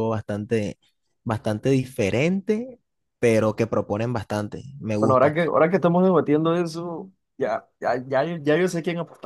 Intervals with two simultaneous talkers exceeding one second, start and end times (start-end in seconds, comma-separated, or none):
none